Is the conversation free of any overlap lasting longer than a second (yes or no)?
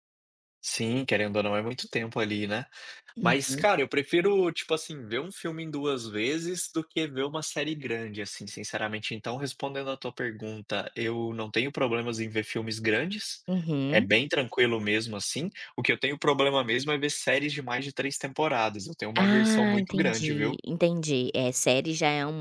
no